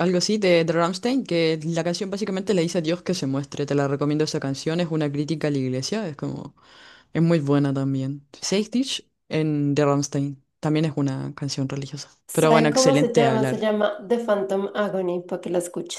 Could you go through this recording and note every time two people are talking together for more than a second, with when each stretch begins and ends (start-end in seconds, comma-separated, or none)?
12.3-13.7